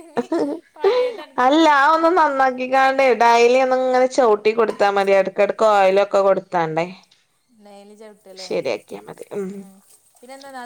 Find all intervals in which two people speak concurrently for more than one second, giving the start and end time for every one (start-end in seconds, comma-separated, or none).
none